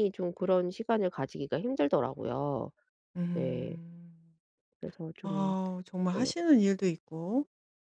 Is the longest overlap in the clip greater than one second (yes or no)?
no